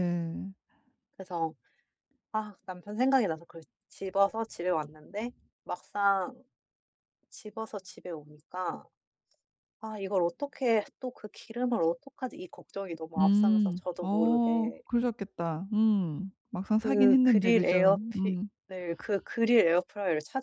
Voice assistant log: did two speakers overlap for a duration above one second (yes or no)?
yes